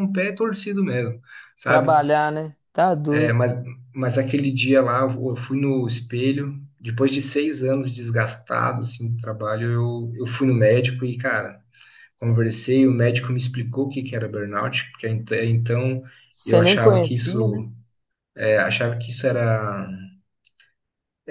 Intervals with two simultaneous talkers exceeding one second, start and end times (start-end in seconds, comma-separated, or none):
16.4-17.6